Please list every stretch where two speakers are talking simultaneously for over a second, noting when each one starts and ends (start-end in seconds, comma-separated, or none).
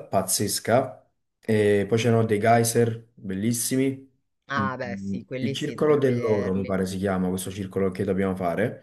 4.6-6.7